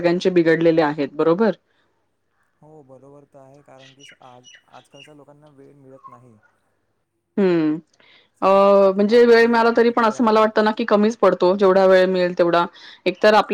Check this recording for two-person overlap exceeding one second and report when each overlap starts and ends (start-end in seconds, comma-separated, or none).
8.5-10.4